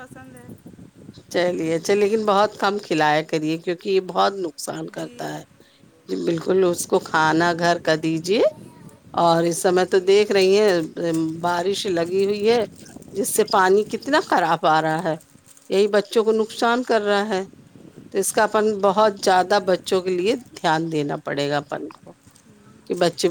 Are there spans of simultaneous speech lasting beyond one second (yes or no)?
no